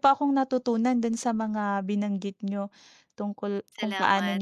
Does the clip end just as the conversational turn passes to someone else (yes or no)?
no